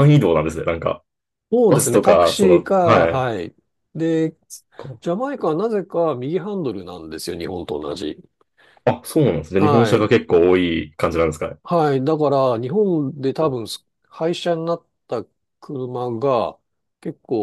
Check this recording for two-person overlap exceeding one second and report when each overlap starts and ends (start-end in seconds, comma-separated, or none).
1.7-3.3